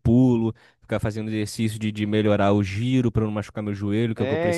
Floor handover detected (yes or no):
yes